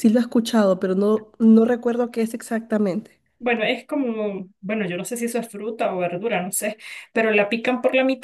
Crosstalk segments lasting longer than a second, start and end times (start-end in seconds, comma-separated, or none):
none